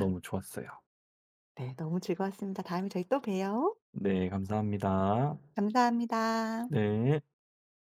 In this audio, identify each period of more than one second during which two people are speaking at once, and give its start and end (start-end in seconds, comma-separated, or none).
none